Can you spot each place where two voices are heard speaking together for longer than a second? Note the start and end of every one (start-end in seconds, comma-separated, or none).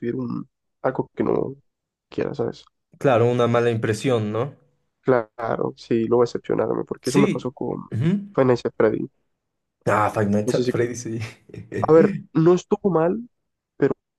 none